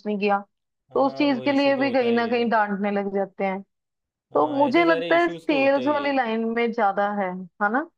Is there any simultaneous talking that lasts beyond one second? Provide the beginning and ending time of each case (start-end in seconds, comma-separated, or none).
0.9-2.5, 4.4-6.1